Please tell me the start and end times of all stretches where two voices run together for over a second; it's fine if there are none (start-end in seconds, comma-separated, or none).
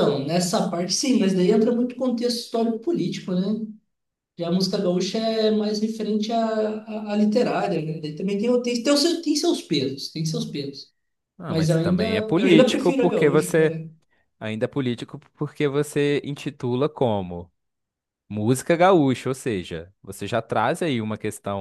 11.5-13.8